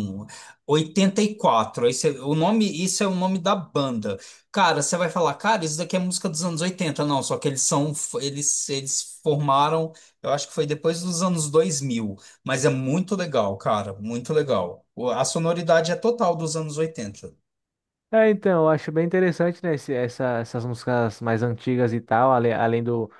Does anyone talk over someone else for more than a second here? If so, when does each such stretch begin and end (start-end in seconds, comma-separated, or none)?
none